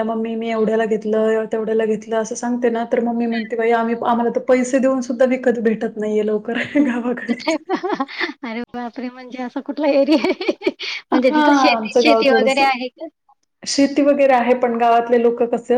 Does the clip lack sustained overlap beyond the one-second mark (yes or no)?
no